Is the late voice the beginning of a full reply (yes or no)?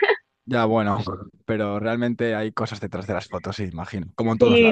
yes